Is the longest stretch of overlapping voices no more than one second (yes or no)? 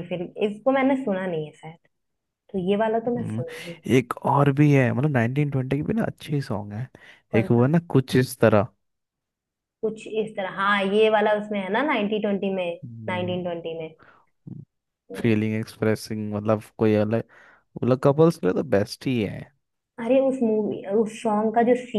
yes